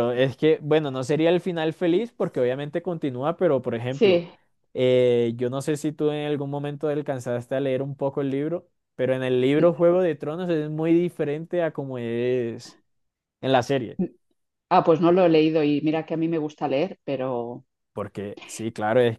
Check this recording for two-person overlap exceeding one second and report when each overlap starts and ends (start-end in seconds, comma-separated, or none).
none